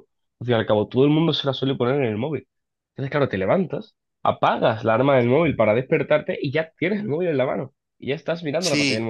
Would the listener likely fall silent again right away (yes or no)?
yes